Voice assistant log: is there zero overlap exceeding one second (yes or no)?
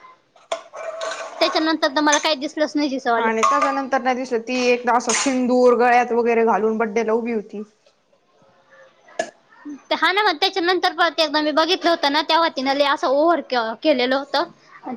yes